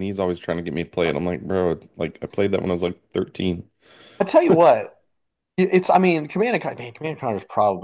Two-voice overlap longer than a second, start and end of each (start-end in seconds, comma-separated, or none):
none